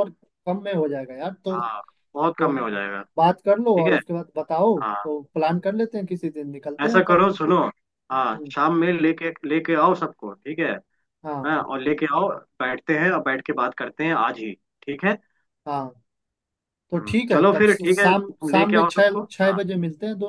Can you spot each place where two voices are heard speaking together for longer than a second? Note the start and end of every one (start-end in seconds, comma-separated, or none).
16.9-19.6